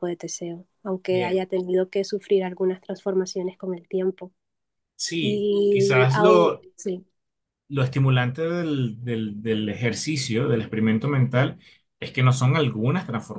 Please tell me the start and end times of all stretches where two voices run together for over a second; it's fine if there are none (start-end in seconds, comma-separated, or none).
5.2-6.7